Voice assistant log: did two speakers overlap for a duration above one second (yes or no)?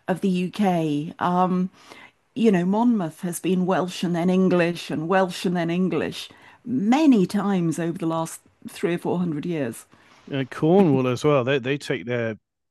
no